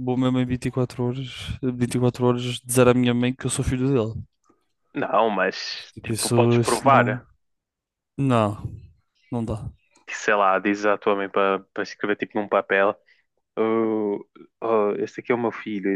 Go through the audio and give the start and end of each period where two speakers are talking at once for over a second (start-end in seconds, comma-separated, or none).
5.9-7.3